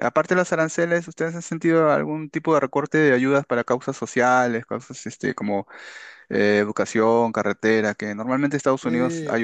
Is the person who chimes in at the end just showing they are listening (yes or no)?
no